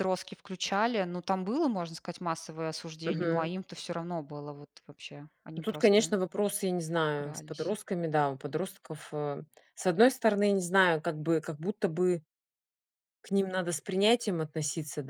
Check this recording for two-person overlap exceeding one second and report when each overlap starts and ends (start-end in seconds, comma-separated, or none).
none